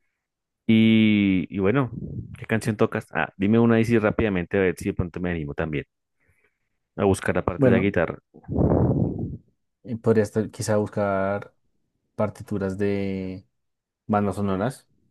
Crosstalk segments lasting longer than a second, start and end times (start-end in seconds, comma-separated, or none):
none